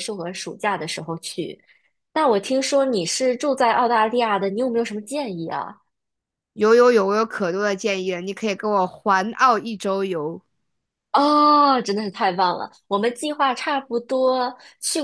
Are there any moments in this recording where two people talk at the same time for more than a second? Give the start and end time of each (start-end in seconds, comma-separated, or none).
none